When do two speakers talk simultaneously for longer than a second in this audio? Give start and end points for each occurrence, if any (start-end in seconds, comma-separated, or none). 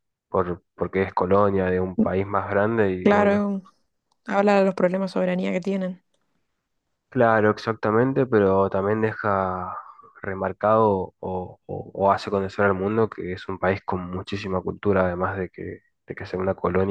none